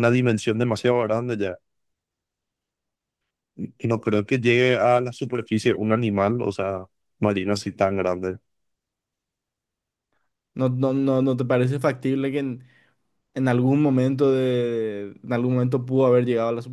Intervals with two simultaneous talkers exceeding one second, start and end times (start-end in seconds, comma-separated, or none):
none